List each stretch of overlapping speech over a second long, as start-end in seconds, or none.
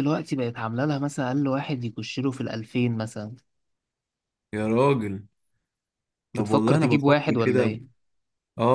6.3-7.7